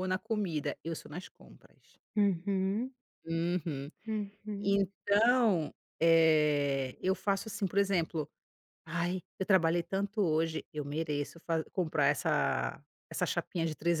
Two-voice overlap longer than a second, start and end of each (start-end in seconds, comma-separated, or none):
none